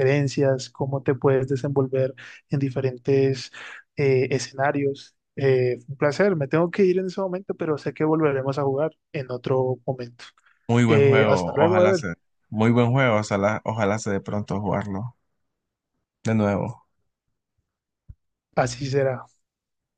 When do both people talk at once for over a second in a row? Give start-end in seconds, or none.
10.9-12.1